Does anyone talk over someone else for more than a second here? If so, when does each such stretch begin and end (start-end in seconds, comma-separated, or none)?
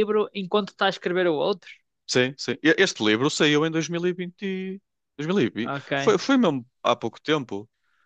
none